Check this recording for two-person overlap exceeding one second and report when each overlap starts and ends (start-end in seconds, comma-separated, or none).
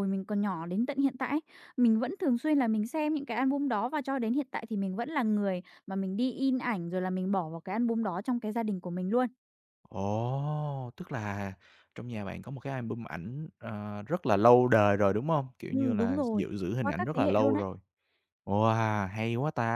15.7-17.6